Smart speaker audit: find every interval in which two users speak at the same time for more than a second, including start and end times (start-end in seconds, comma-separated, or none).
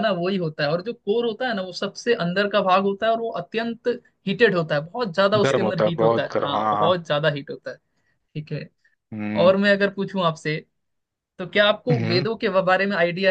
5.4-7.0